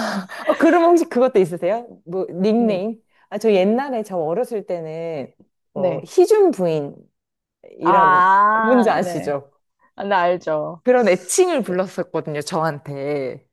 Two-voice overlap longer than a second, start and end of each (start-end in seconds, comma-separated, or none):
7.8-9.4